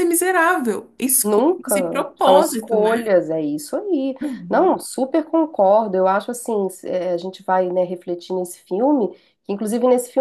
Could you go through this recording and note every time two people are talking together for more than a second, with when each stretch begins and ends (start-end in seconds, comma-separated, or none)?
1.2-3.1